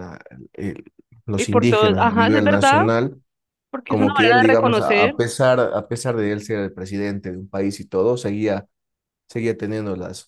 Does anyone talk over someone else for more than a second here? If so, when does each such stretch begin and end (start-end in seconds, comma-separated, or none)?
1.4-2.8, 3.9-5.2